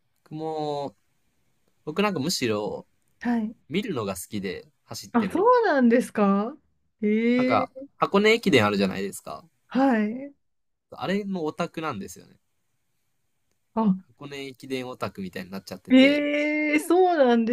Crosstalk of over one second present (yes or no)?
no